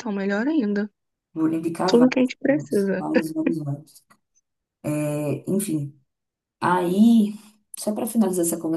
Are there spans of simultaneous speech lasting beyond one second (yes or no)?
yes